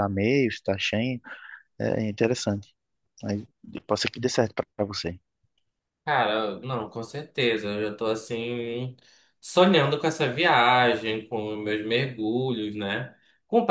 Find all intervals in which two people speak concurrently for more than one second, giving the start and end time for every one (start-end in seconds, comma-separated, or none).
none